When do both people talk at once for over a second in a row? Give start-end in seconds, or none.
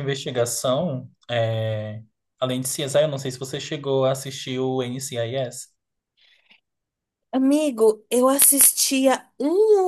none